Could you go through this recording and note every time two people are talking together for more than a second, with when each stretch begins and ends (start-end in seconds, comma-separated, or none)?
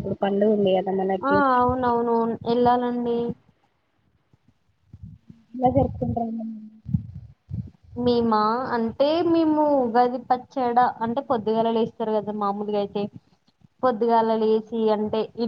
none